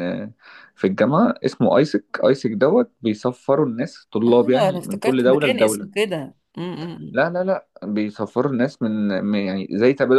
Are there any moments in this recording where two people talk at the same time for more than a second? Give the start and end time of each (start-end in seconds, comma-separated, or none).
4.3-5.9